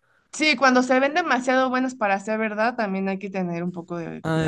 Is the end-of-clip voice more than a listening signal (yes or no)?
yes